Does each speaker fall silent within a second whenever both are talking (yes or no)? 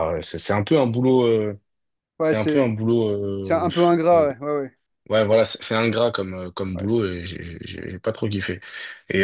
yes